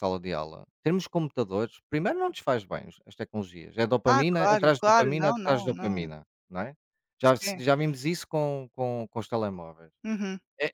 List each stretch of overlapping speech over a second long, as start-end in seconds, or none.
4.0-6.1